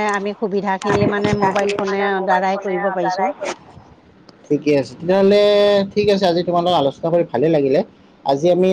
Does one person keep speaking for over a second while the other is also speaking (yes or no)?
yes